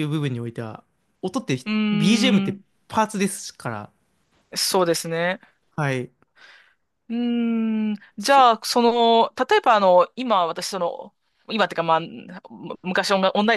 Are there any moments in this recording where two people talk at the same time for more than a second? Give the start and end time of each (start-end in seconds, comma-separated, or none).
none